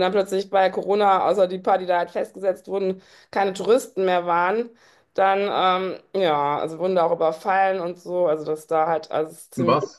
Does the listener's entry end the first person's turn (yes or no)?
no